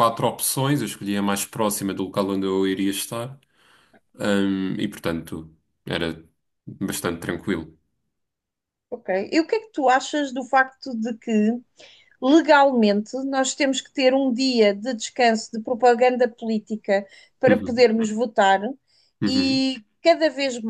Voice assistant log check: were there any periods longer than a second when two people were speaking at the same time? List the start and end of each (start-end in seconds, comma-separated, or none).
none